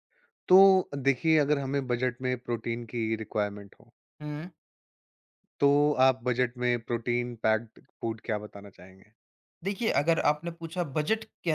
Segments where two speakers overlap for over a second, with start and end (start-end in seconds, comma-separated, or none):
none